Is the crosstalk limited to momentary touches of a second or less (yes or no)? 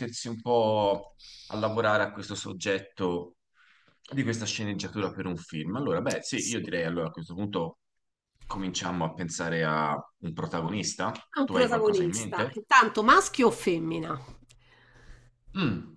no